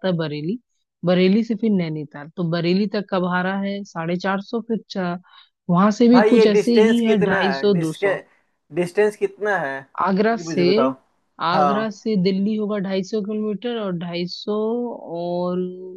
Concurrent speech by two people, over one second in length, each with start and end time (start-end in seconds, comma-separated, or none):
6.1-8.1